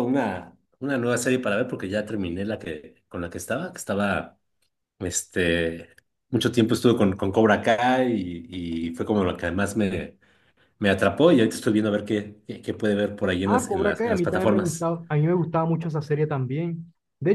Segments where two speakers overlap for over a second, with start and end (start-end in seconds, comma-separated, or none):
13.4-14.9